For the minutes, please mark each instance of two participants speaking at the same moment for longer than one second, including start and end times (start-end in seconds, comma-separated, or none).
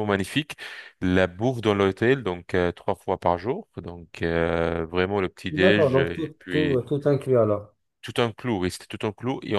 5.5-6.8